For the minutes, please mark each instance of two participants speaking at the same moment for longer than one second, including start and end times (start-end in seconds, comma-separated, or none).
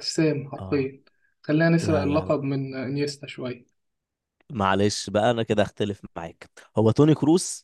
none